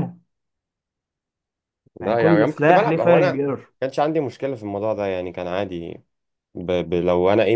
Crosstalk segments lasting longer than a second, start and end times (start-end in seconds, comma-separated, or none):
2.0-3.4